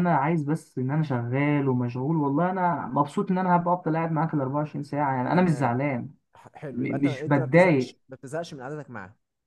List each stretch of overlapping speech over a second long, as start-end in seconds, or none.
6.7-8.0